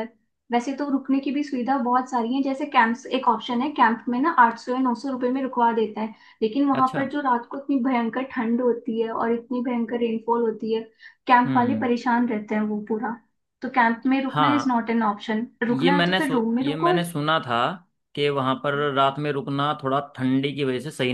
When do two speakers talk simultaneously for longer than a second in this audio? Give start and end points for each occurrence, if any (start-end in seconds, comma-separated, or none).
15.7-16.9